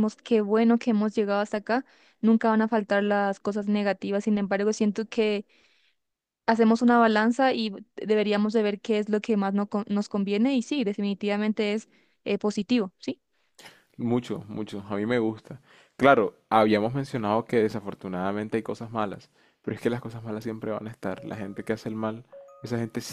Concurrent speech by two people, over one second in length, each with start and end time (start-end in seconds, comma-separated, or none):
none